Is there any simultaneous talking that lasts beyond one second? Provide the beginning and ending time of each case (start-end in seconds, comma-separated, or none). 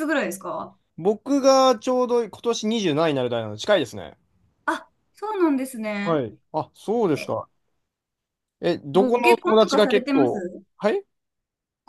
8.9-10.6